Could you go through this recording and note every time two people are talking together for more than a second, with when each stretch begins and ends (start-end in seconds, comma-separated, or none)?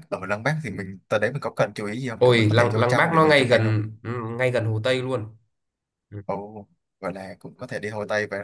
2.2-3.8